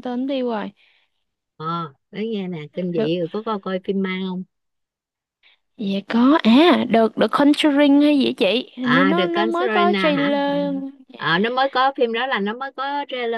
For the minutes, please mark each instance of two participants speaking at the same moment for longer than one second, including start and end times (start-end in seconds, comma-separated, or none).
8.8-10.6